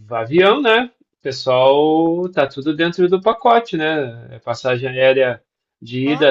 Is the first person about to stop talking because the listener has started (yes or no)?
no